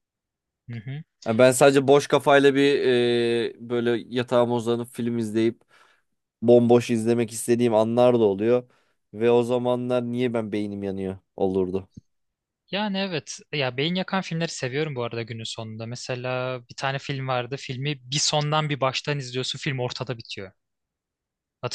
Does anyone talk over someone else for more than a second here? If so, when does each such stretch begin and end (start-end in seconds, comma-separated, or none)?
none